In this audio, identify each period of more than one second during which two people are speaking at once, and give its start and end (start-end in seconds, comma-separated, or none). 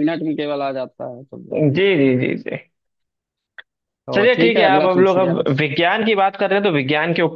4.1-5.5